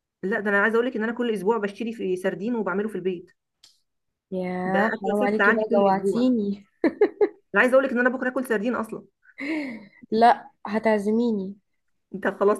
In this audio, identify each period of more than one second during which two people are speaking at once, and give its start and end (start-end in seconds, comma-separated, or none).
4.7-6.3